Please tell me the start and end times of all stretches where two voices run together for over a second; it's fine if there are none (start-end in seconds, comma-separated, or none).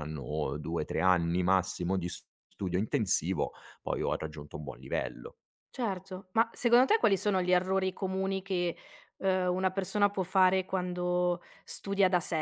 none